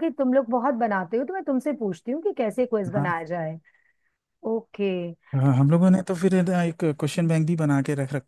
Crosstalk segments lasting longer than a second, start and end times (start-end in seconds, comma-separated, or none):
none